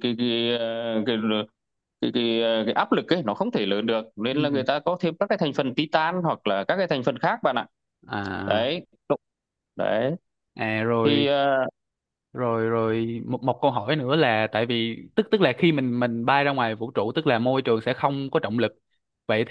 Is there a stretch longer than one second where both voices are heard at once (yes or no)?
no